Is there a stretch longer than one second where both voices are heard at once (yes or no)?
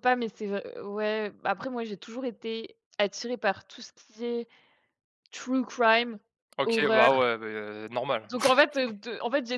no